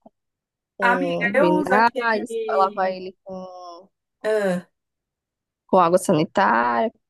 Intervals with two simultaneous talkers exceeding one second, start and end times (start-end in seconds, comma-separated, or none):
0.8-3.0